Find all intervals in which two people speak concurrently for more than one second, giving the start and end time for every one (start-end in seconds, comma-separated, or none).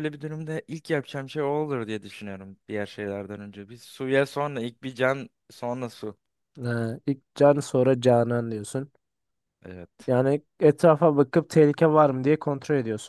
none